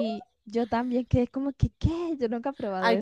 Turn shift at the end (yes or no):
yes